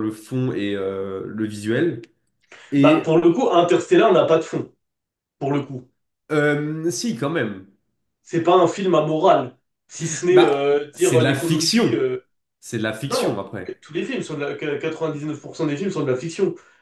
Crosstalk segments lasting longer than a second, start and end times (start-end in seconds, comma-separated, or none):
10.3-12.1